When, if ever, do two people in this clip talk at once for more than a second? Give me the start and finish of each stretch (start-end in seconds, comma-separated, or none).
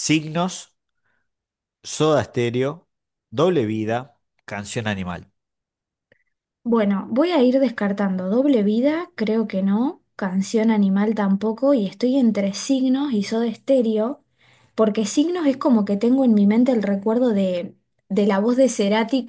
none